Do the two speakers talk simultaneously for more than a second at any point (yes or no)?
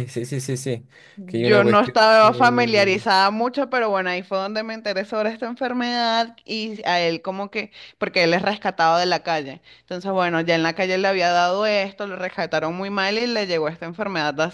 yes